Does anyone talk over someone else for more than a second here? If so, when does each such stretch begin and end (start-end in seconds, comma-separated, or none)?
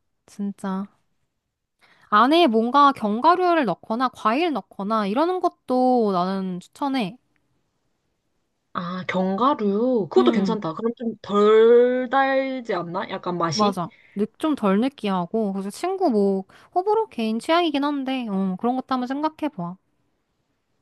none